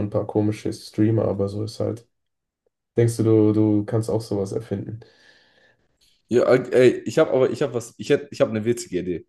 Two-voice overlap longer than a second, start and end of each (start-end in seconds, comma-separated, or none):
none